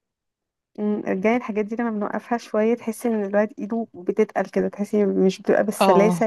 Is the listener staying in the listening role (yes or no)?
yes